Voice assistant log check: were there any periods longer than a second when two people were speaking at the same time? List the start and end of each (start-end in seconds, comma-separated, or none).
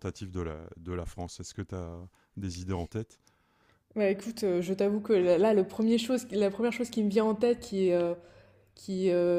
none